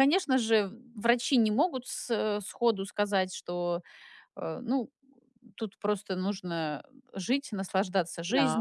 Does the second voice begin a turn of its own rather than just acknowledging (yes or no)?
no